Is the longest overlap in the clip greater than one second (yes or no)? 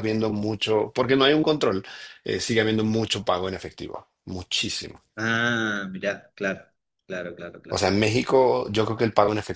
no